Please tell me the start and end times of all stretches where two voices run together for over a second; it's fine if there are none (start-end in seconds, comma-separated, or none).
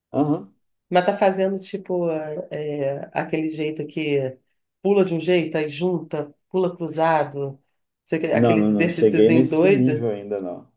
8.3-10.1